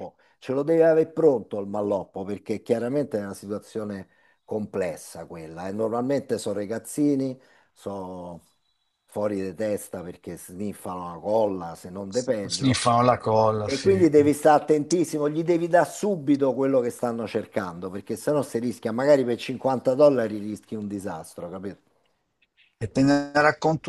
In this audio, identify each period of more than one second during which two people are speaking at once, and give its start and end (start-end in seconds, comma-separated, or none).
none